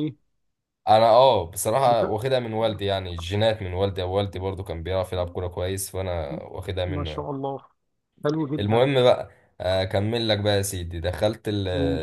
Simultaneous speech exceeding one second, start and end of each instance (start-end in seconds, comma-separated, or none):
none